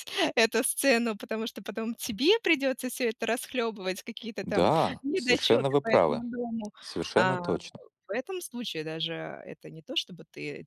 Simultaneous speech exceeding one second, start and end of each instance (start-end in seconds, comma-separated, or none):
4.4-6.2